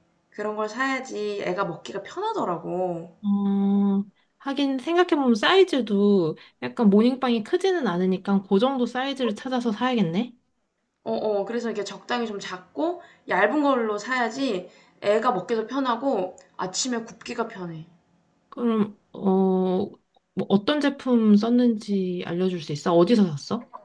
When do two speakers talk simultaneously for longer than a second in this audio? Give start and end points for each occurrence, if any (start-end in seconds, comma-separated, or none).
none